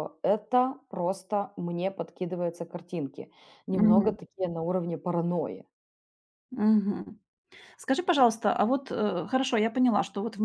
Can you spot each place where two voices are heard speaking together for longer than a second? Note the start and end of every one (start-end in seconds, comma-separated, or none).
none